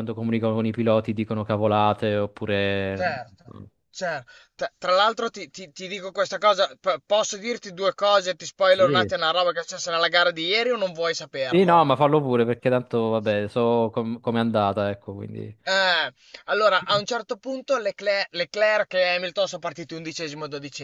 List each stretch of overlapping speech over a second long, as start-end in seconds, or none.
none